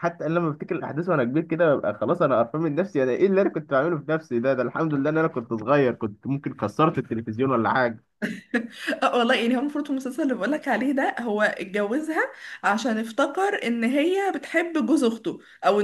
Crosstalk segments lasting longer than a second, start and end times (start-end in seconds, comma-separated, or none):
none